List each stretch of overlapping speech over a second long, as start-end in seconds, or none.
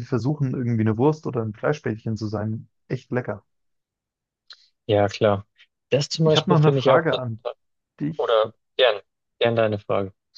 6.2-7.4